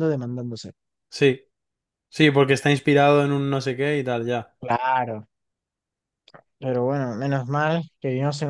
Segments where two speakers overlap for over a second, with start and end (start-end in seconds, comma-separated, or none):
none